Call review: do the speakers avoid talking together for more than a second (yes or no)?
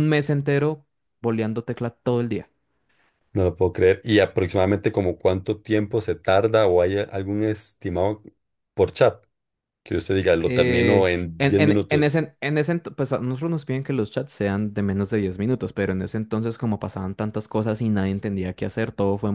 no